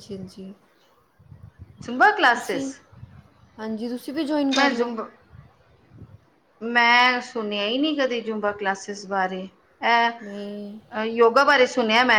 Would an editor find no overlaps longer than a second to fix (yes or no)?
yes